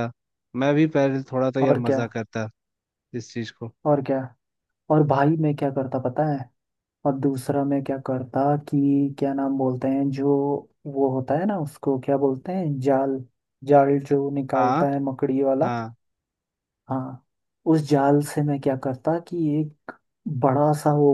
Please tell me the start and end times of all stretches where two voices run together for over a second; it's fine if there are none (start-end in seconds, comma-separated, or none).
none